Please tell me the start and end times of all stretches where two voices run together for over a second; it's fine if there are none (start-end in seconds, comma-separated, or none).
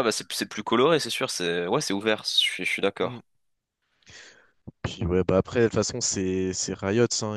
none